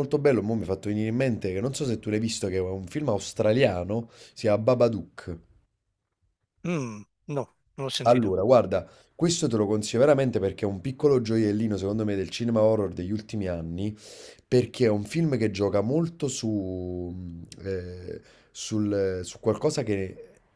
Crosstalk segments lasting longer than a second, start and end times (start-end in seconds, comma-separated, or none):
none